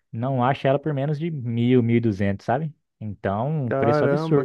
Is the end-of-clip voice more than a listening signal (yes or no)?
yes